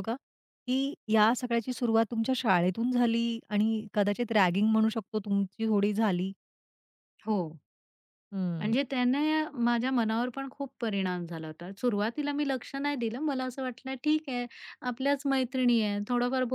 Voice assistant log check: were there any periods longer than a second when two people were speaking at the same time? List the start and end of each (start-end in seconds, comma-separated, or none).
none